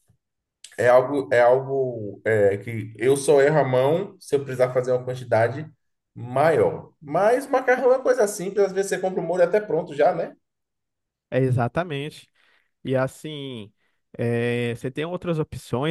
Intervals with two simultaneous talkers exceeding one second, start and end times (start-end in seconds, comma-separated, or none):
none